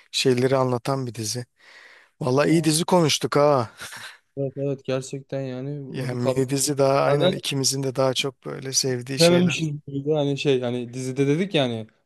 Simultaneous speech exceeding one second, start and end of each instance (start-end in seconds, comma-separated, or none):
none